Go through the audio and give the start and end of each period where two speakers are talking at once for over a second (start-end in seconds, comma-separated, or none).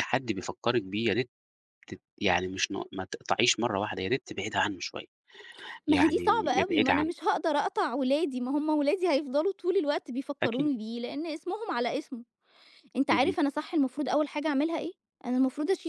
5.9-7.1